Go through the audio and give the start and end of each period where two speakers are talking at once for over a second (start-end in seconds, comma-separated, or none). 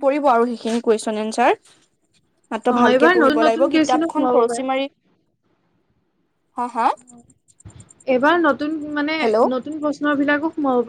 2.7-4.6